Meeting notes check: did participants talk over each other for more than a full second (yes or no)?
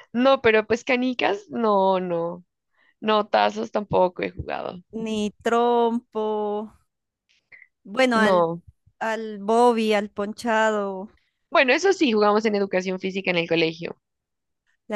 no